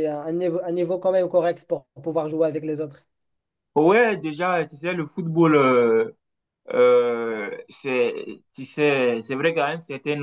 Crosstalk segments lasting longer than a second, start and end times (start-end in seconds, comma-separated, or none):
none